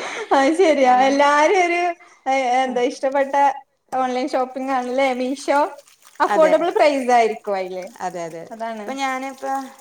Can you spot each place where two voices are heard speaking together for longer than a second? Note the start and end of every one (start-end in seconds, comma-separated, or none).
none